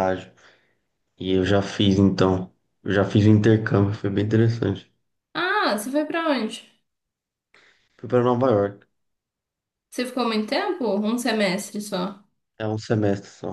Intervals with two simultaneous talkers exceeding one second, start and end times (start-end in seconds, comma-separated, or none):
none